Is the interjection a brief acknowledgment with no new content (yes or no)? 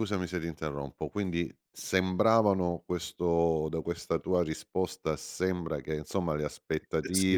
yes